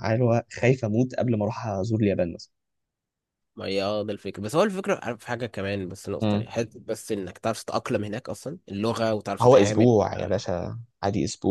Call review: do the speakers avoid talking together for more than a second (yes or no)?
yes